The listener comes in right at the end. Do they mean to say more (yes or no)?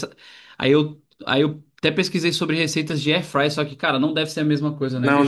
yes